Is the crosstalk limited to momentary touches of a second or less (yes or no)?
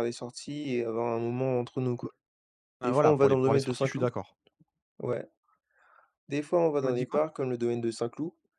no